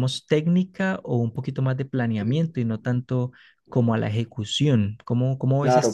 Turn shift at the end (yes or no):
yes